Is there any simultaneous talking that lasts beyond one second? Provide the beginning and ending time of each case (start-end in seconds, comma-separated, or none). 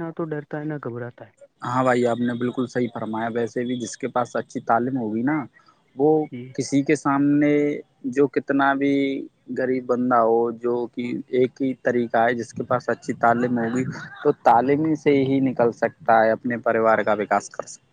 none